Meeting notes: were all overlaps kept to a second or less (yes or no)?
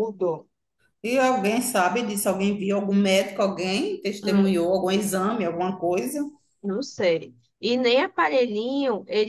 yes